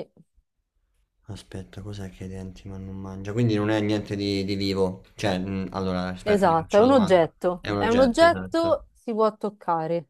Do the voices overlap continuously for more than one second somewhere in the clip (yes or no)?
yes